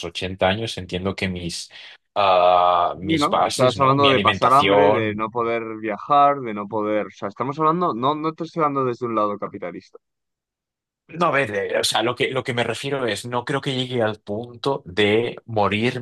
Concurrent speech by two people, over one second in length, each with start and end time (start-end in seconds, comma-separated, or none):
3.0-5.3